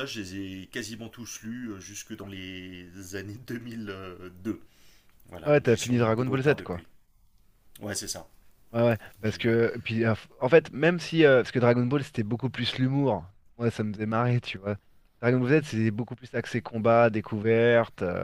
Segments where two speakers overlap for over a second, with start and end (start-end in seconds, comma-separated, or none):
5.5-6.8